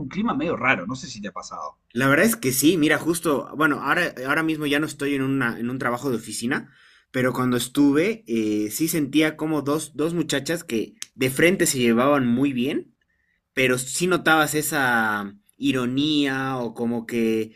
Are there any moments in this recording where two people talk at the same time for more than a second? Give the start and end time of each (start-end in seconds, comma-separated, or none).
none